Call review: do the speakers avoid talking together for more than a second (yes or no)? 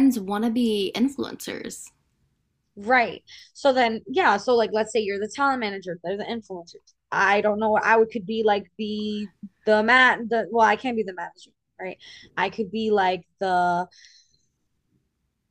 yes